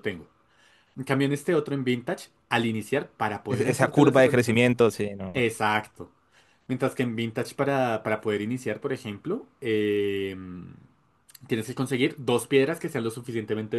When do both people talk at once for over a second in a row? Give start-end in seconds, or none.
3.5-4.7